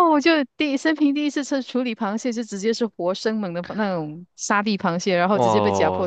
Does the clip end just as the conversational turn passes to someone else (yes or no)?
yes